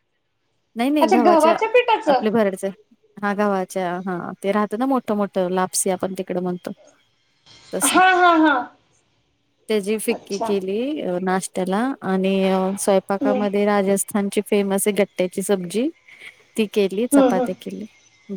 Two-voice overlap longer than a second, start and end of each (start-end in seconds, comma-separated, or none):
none